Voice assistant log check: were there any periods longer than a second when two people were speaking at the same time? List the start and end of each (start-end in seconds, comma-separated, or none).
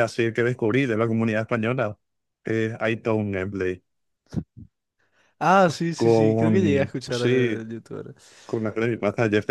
6.0-7.6